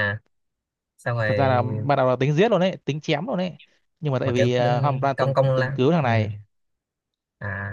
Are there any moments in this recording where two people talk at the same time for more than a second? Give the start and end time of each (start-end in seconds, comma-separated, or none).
4.2-6.1